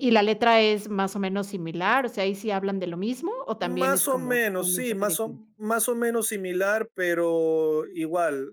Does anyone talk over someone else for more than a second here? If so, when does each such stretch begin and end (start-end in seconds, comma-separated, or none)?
3.6-5.4